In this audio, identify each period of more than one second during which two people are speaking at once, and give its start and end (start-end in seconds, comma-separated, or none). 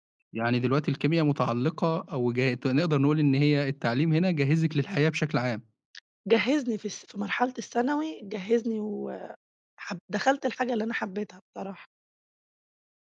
none